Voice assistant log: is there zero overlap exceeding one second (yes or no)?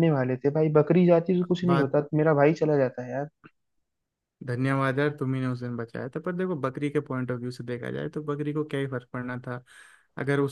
yes